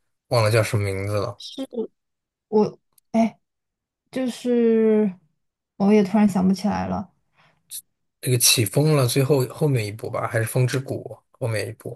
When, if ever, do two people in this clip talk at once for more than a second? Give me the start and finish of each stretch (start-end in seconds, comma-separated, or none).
none